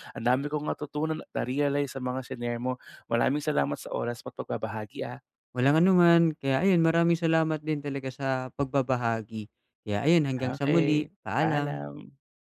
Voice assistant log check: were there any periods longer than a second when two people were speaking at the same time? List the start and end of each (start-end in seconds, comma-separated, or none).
10.4-11.8